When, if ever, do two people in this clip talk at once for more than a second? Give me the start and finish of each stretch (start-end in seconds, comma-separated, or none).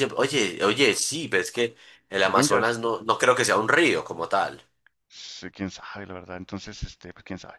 none